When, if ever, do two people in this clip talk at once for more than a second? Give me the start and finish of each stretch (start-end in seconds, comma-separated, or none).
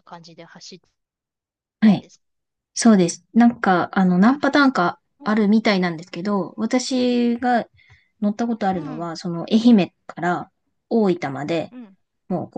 none